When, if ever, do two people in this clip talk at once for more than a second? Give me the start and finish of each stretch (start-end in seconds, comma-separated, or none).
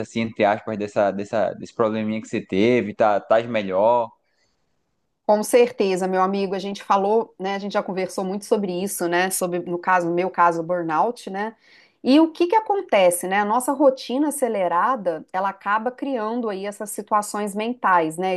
none